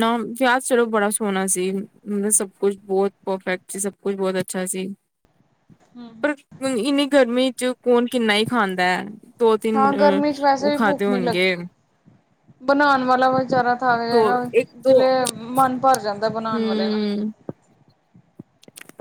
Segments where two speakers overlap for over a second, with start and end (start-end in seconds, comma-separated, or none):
9.8-11.5